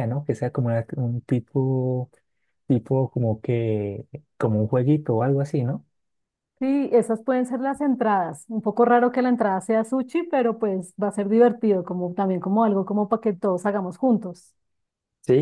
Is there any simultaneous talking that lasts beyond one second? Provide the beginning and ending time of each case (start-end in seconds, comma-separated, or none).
none